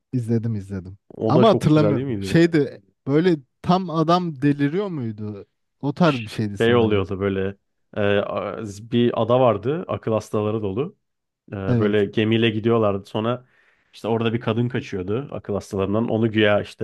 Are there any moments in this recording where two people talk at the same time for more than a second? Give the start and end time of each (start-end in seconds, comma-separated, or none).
1.1-2.4